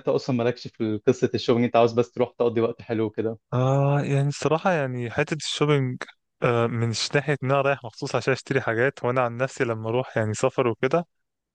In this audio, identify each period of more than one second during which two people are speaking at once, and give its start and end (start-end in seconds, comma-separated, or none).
none